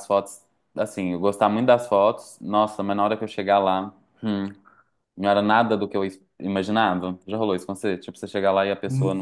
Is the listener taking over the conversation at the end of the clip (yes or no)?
yes